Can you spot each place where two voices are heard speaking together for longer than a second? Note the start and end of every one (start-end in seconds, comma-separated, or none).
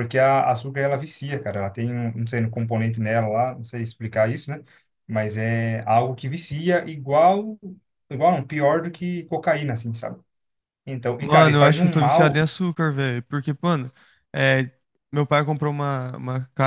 11.2-12.5